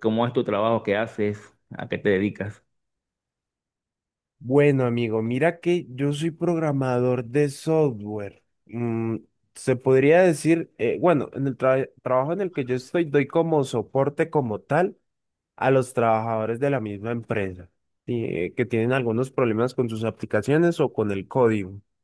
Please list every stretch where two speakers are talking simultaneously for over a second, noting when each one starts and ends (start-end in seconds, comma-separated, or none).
none